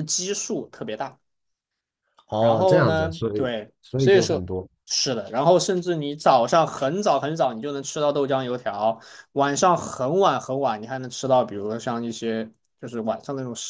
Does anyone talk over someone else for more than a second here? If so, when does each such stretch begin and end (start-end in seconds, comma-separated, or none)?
2.4-4.5